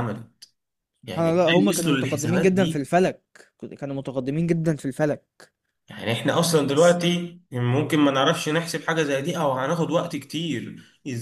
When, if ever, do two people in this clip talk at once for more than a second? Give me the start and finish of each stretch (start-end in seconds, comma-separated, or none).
1.1-2.9